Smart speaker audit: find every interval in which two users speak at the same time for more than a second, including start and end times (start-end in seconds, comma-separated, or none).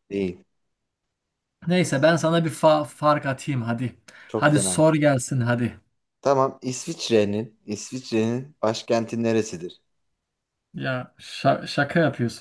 none